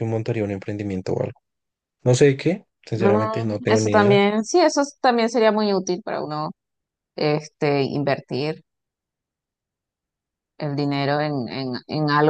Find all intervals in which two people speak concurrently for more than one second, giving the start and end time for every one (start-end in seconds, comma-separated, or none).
2.9-4.2